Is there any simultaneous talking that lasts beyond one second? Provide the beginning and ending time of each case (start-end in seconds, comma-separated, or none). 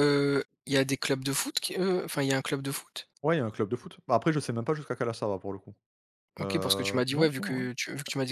6.4-7.7